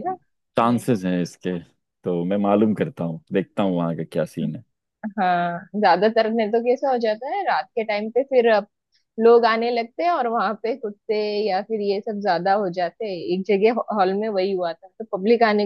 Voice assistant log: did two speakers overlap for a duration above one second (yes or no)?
no